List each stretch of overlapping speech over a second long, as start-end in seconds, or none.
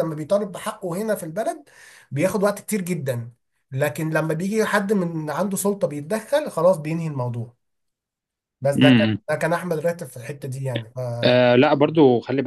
none